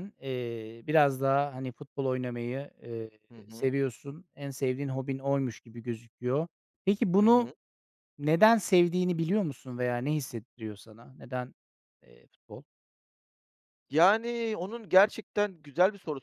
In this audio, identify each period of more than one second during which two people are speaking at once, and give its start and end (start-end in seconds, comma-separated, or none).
none